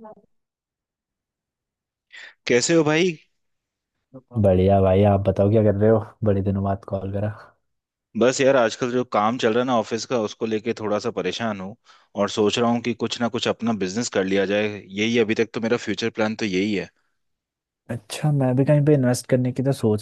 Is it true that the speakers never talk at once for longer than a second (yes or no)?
yes